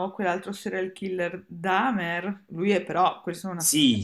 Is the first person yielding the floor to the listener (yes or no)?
yes